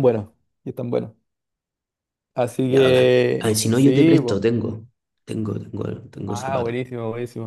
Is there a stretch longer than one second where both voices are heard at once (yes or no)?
yes